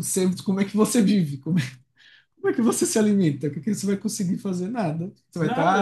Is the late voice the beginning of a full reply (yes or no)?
no